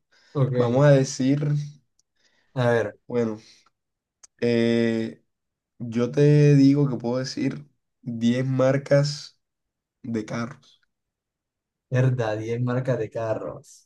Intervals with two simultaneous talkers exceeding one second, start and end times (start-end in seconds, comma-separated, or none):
none